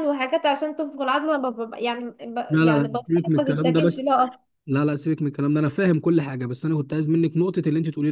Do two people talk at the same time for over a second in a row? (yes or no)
yes